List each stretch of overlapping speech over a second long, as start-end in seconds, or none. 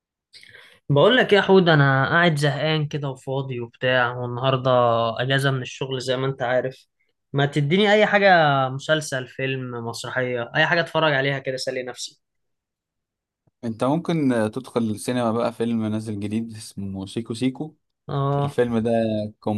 none